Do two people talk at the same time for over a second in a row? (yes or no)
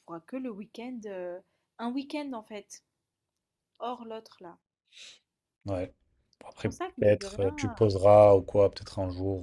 yes